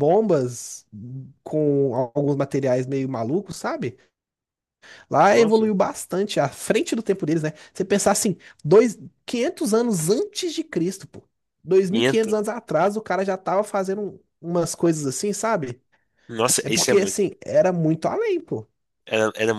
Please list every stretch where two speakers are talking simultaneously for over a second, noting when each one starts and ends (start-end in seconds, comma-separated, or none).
none